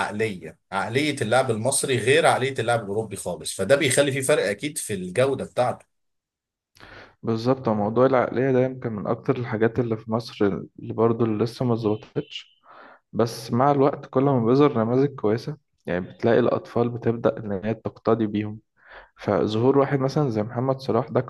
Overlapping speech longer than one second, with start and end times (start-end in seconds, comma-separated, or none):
none